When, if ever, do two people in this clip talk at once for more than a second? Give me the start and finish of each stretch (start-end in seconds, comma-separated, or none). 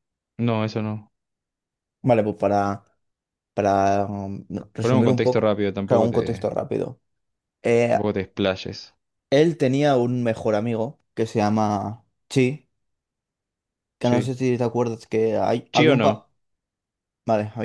4.8-6.5